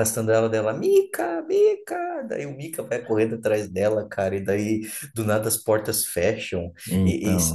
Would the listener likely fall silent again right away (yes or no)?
yes